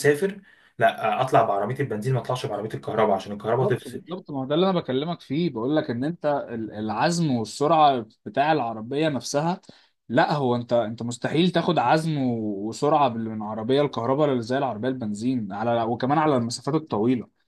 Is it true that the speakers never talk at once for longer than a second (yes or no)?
yes